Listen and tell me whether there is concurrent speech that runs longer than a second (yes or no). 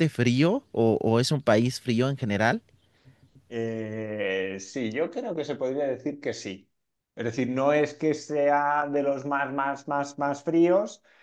no